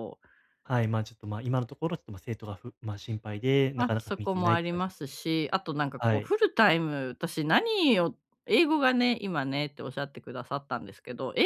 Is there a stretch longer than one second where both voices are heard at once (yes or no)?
yes